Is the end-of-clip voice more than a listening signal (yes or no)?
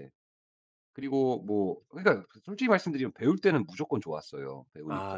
yes